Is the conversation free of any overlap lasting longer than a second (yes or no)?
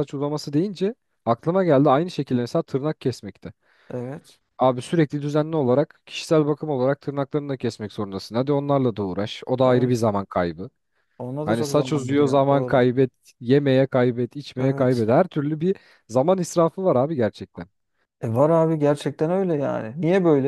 no